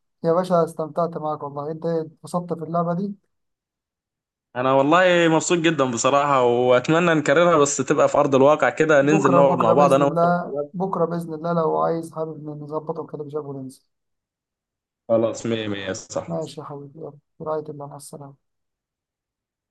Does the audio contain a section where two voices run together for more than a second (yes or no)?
yes